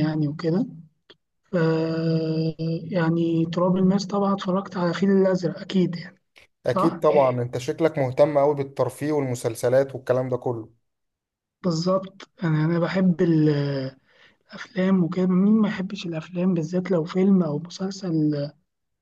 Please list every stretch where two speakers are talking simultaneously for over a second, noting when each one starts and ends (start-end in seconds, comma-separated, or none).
none